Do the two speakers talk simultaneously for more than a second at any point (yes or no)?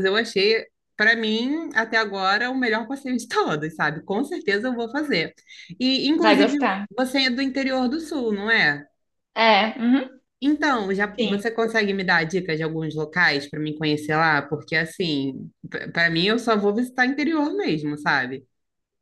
no